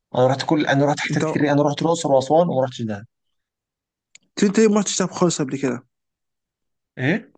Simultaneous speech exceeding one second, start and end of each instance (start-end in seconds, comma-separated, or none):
none